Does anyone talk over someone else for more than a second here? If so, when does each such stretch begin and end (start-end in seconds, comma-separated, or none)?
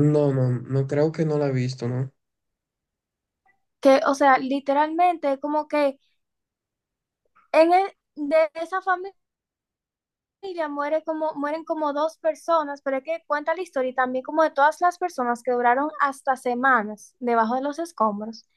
none